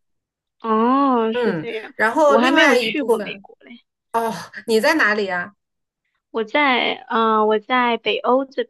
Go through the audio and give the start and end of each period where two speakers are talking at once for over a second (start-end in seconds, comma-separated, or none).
1.3-3.5